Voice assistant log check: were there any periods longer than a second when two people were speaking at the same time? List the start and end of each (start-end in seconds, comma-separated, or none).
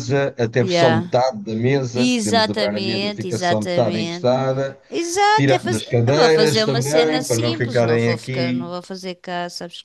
1.9-4.3, 5.3-8.7